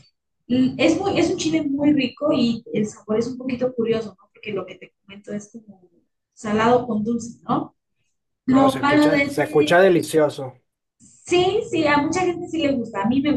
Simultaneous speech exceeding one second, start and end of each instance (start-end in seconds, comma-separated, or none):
8.5-9.8